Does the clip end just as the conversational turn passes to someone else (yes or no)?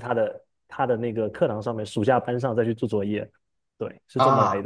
yes